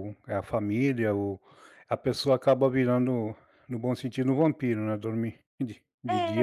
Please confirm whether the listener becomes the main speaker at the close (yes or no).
yes